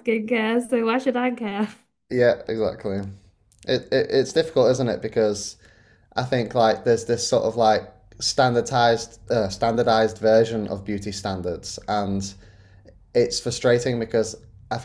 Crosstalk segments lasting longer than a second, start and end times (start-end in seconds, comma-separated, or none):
none